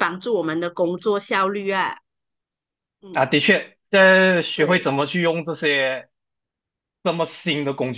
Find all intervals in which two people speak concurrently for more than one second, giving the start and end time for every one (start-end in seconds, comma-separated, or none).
none